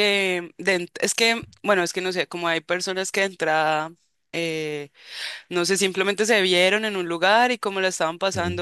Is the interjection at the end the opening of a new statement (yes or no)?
no